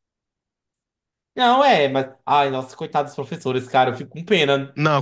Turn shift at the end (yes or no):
yes